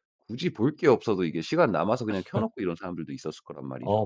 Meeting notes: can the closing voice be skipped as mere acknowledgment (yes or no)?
no